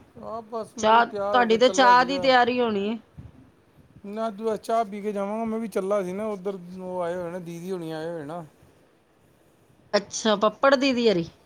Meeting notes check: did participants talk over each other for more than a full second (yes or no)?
yes